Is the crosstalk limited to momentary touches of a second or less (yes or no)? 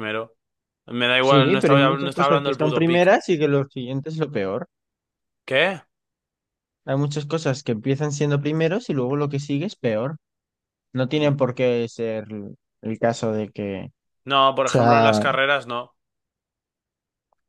no